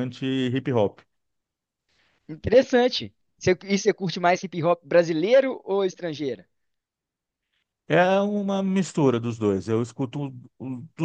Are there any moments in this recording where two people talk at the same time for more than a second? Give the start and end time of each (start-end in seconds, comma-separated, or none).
none